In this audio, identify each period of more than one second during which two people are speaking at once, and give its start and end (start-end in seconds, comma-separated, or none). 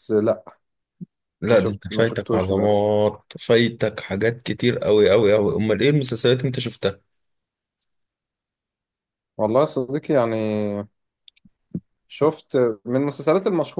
1.5-2.9